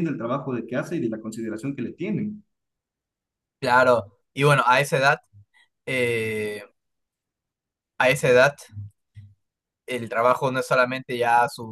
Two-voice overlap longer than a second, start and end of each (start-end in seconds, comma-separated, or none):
none